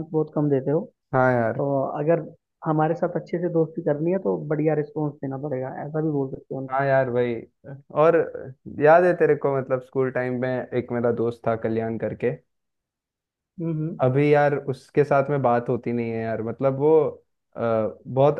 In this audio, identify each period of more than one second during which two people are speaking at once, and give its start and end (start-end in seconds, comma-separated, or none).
none